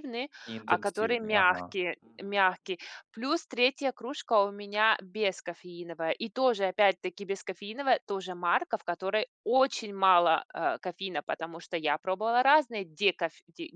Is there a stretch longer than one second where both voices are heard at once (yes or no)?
yes